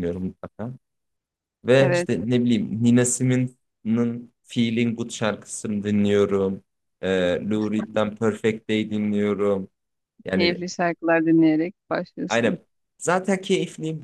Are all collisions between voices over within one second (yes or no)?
yes